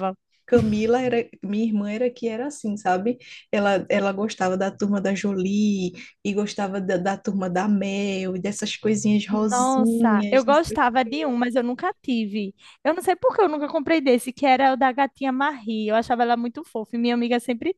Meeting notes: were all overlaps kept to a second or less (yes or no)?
no